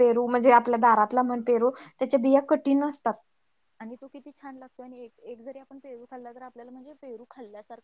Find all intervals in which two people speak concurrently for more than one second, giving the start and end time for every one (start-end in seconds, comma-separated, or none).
none